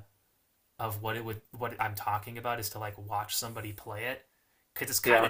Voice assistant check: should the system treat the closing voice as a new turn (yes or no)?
no